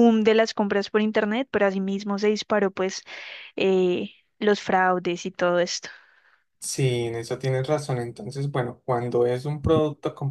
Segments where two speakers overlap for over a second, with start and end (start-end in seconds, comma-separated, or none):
none